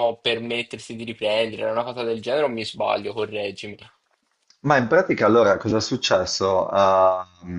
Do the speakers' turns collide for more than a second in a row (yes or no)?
no